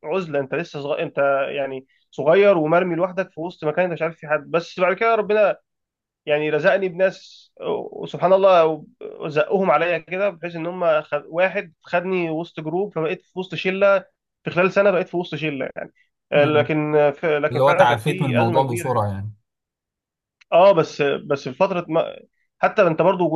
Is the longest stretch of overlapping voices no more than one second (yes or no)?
no